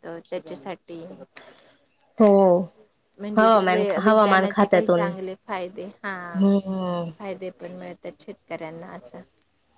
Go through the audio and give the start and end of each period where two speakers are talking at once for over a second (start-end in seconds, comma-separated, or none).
3.4-5.1